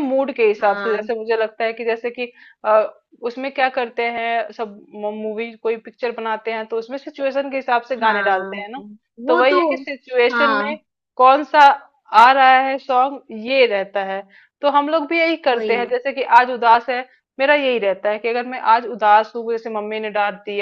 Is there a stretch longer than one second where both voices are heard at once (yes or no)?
no